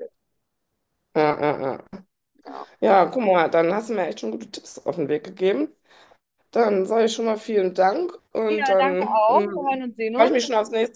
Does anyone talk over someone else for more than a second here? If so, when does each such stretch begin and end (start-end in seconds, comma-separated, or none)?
8.5-10.3